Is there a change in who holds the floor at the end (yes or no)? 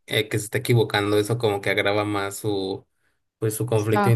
no